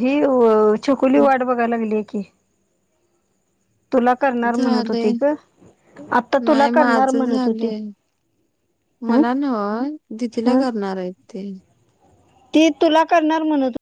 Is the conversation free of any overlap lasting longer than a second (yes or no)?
no